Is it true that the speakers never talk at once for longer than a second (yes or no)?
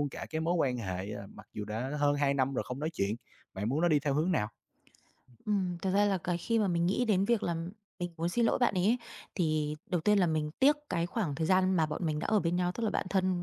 yes